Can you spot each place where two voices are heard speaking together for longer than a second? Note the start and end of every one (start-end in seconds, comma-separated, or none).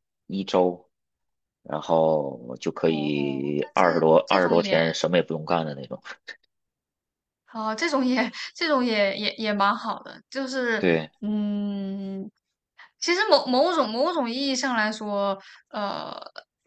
2.9-4.8